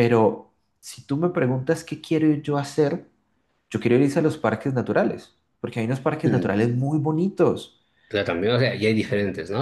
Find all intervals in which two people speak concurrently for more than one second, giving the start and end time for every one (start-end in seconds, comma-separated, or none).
none